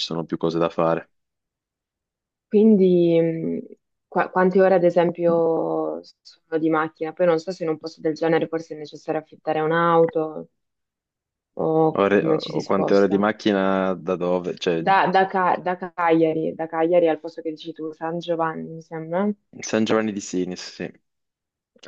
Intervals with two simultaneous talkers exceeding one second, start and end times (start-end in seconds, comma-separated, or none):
11.9-13.2